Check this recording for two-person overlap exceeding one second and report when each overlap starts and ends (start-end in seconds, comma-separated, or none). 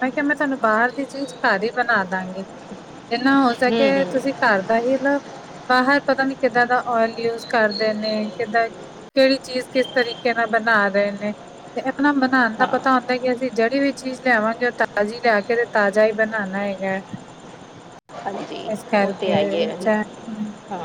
none